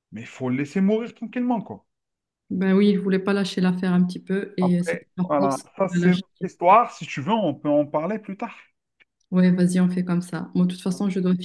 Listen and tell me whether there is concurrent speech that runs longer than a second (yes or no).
yes